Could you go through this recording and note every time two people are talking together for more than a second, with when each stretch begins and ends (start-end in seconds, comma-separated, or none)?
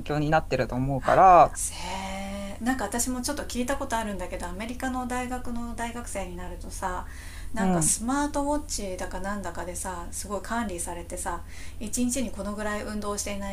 none